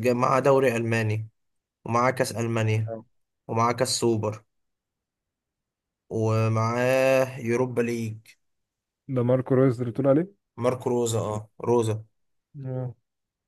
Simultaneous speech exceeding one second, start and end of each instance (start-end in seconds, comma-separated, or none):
none